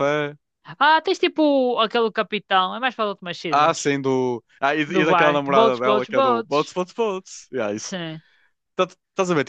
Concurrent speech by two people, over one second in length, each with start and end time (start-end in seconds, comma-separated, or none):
4.9-6.8